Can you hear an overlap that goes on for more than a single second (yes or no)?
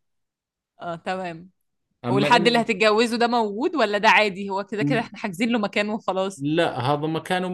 no